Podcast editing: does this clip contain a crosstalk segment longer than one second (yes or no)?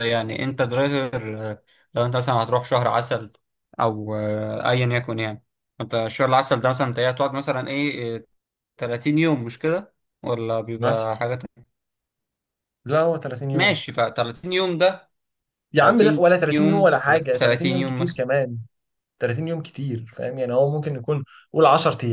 yes